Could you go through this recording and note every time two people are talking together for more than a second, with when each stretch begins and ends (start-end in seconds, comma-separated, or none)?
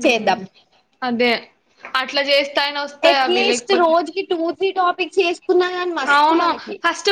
none